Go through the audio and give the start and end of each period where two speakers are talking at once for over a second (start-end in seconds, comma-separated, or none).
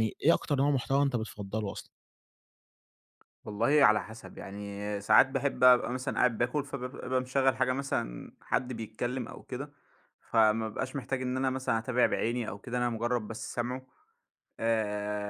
none